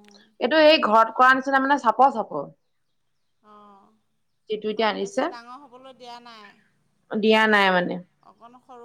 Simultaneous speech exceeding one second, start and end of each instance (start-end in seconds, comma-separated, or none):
none